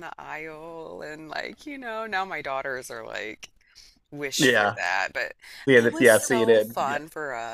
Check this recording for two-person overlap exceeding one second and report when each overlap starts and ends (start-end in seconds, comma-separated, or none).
5.8-7.0